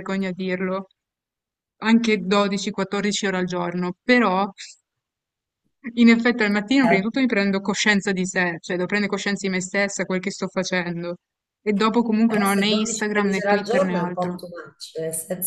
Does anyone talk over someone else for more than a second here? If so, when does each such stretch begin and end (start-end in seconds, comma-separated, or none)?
12.3-14.4